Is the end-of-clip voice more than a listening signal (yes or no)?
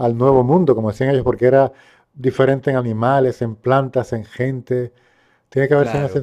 no